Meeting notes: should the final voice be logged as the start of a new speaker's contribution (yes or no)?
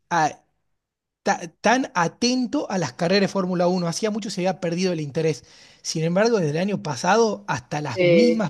no